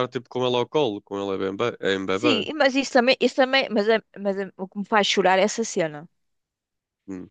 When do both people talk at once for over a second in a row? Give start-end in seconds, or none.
none